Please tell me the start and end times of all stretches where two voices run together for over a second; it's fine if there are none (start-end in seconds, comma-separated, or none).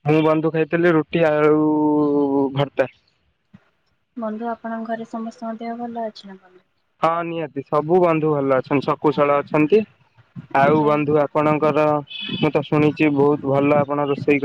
none